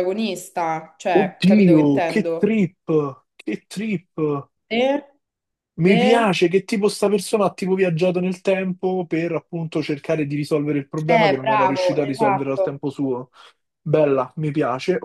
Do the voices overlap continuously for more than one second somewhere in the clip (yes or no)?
yes